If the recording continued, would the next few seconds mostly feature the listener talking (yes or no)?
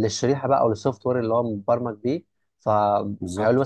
no